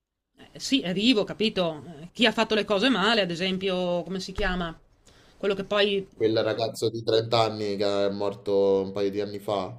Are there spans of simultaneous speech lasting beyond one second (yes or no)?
no